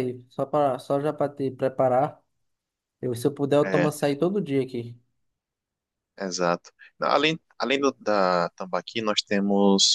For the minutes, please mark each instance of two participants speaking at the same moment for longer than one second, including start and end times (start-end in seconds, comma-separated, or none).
none